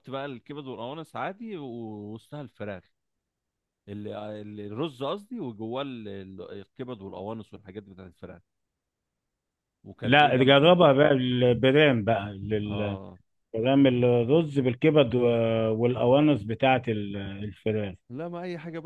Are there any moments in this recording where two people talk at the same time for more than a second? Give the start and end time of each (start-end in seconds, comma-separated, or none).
none